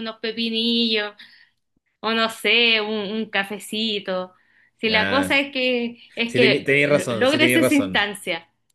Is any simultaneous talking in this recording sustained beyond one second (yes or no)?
yes